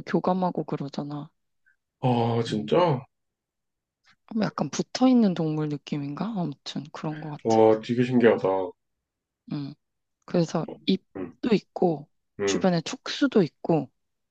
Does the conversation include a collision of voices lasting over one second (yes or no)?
no